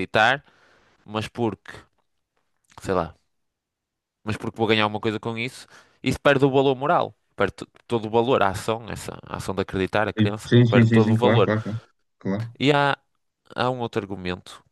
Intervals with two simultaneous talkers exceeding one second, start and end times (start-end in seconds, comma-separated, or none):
10.2-11.5